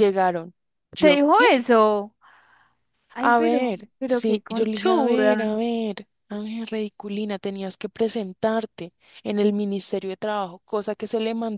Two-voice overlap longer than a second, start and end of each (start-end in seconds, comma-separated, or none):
3.2-5.5